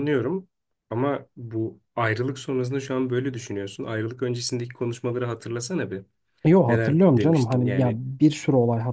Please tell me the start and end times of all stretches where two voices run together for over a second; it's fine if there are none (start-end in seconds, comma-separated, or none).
6.7-8.0